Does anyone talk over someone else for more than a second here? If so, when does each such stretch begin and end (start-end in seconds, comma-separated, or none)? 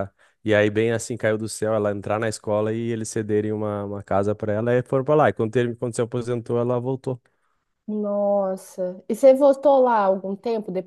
none